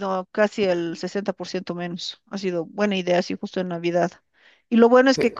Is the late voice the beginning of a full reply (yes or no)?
no